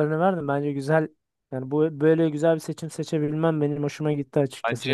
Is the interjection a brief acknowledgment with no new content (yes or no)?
no